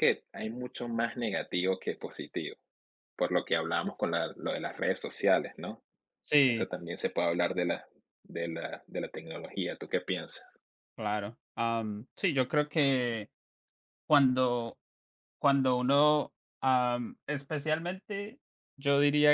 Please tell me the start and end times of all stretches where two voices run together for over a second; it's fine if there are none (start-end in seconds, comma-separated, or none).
none